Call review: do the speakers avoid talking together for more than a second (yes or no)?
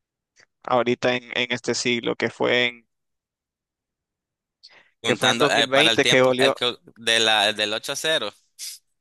no